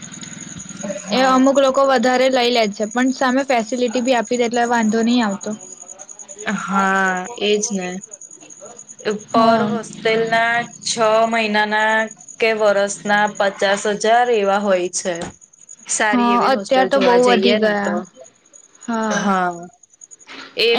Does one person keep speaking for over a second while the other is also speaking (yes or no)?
yes